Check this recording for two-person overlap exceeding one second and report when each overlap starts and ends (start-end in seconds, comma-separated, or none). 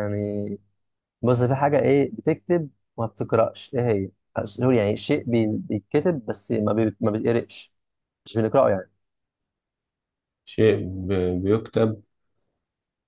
none